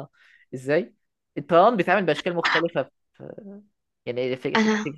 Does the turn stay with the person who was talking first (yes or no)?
yes